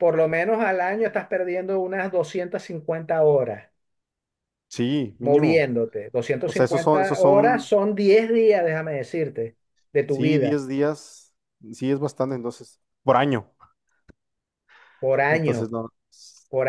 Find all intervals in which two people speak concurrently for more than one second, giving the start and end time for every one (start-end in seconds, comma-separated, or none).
6.5-7.7